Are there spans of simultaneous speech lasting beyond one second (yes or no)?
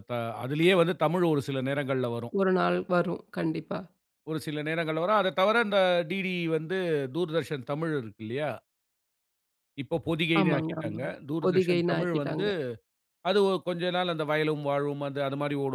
yes